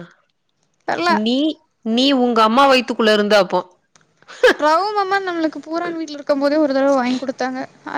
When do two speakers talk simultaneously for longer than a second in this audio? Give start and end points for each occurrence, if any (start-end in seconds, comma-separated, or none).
none